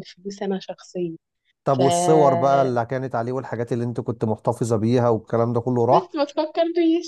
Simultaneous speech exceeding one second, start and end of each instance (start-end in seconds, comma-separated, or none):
none